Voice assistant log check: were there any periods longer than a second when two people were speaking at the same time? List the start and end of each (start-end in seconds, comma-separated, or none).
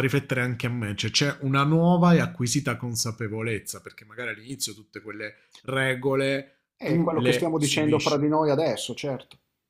6.8-8.3